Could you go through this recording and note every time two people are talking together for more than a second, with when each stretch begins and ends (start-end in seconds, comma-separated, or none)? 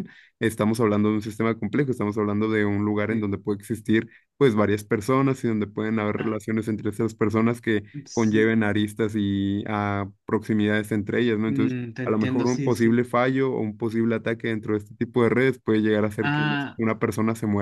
11.5-13.0